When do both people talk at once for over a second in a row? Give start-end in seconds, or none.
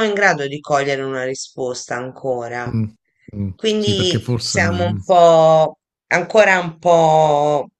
3.5-5.0